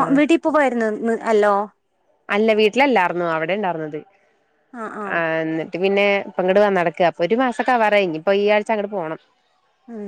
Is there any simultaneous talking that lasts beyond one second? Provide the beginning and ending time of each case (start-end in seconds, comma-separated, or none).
none